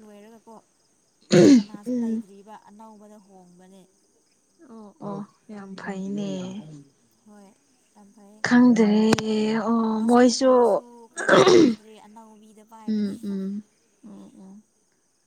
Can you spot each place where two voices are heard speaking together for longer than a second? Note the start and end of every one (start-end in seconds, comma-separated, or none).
none